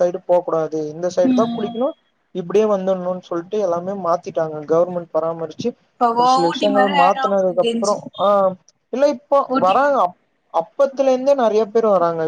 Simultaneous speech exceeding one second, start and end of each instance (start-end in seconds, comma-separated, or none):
6.5-8.0